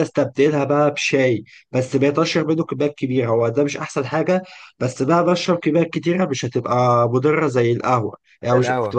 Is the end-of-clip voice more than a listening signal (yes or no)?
no